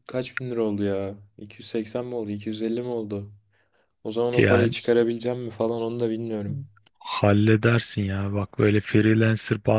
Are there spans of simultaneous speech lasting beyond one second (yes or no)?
no